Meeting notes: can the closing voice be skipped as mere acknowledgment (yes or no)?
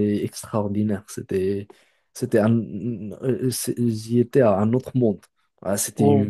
yes